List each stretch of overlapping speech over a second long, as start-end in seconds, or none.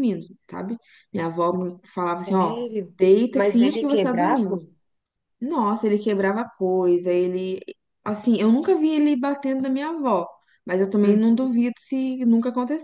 3.3-4.6